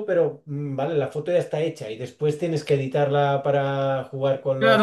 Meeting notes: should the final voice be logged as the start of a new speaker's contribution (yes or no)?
yes